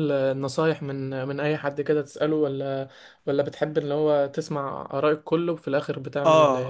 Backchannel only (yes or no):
no